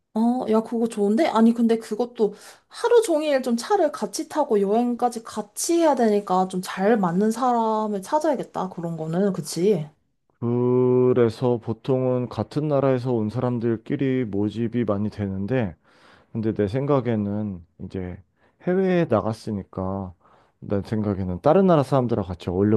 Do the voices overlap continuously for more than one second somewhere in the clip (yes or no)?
no